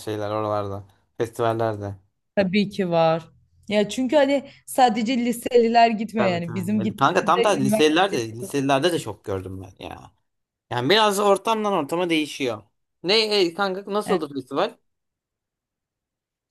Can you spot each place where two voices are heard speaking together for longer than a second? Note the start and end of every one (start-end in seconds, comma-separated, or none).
6.2-8.3